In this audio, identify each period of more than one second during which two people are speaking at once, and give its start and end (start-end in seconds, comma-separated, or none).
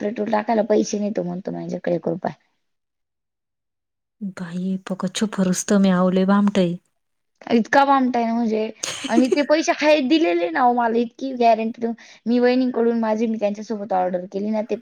none